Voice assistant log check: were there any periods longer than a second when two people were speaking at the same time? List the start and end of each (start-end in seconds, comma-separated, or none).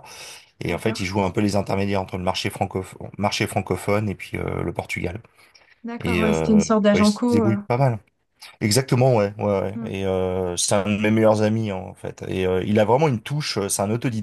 6.0-7.6